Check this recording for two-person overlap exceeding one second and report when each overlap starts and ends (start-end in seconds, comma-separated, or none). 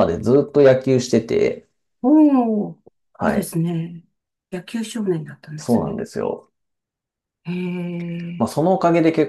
none